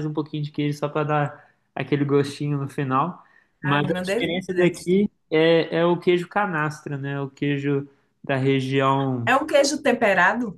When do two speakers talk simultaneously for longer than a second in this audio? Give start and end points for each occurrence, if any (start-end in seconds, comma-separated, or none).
3.6-5.1